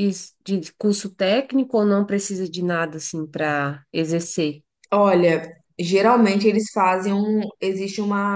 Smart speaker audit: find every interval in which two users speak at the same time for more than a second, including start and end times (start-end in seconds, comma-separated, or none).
none